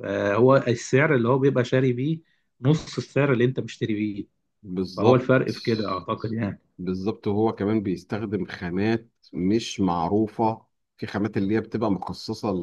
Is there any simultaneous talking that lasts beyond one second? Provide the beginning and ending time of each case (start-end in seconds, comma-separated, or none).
none